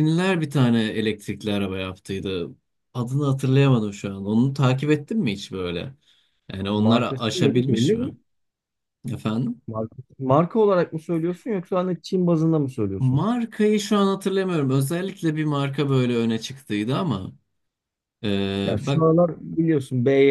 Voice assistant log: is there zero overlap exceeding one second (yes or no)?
no